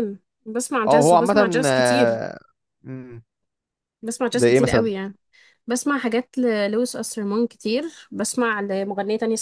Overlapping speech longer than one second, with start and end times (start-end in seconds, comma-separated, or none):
0.9-2.2